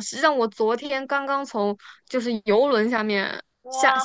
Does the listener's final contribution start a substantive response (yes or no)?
yes